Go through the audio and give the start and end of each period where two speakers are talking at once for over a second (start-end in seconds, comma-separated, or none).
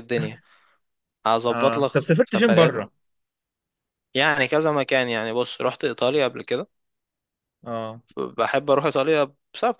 1.5-2.9